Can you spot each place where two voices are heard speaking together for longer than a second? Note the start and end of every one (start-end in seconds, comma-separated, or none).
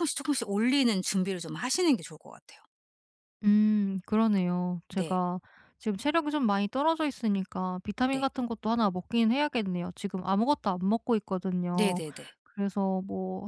none